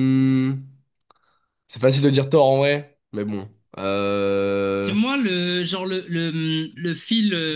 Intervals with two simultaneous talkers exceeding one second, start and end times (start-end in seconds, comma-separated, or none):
none